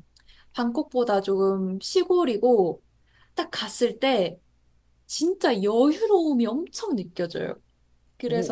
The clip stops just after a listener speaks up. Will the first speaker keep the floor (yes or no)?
no